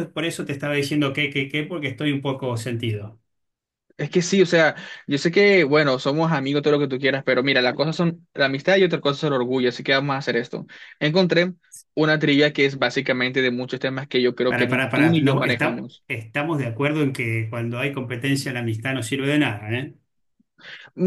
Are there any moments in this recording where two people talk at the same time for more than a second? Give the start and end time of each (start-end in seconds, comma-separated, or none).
14.5-16.0